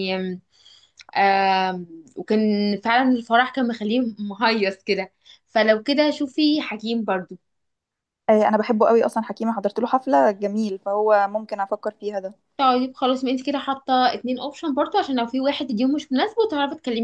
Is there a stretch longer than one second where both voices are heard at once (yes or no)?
no